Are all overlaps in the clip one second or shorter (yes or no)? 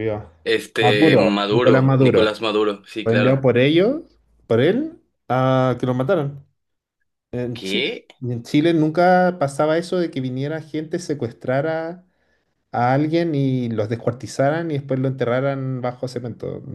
no